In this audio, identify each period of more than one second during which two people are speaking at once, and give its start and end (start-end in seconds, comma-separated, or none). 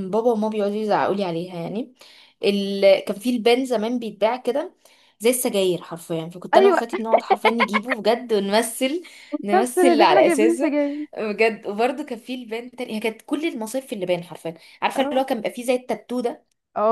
9.5-10.8